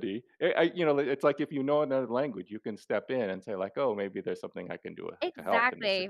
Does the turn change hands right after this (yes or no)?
yes